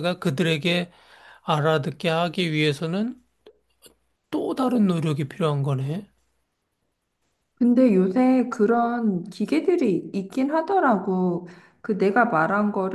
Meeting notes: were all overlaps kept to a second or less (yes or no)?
yes